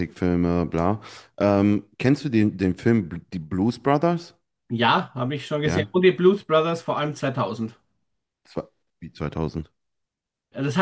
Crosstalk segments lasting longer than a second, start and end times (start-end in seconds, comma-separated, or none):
none